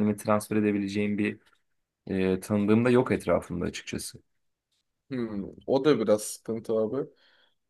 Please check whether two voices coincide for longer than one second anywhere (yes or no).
no